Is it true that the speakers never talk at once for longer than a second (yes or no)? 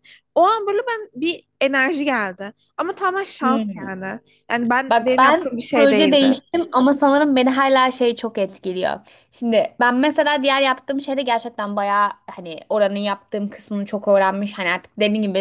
no